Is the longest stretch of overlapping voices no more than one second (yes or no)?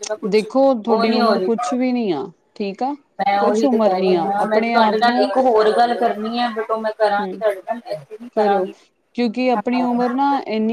no